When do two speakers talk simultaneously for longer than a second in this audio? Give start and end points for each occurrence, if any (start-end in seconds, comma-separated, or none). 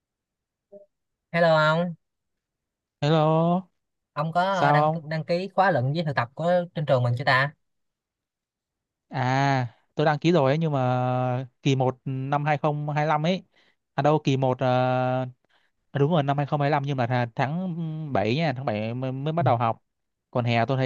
none